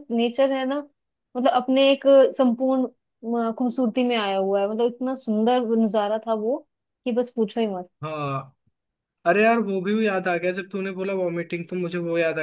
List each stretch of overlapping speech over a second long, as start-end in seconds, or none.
none